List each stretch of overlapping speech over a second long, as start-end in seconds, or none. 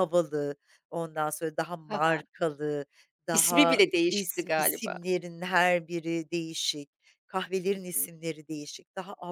3.3-5.0